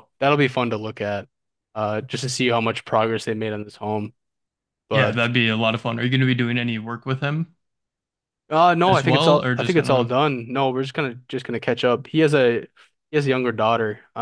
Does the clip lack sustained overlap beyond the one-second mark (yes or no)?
no